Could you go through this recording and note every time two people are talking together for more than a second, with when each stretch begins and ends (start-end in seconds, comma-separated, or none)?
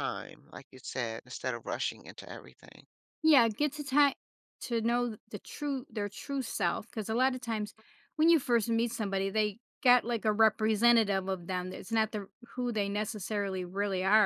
none